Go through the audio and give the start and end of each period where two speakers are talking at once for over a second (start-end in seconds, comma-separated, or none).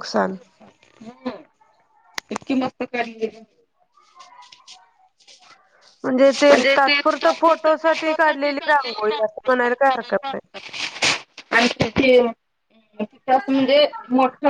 8.7-10.5